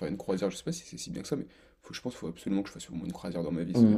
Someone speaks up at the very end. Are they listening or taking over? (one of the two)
taking over